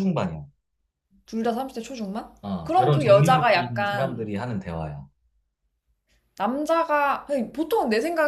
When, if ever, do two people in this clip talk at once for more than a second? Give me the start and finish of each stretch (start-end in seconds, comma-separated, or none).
2.4-4.3